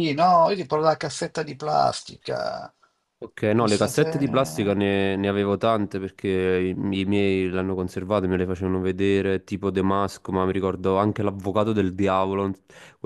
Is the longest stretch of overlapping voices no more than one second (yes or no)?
no